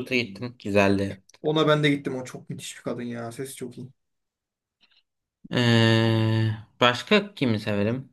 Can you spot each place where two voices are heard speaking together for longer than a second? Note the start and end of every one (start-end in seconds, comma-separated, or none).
none